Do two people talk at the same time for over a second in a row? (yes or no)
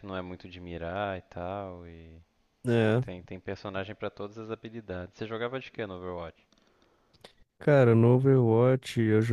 no